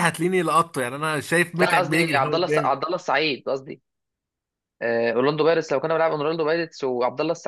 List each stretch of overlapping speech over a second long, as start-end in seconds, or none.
1.6-2.8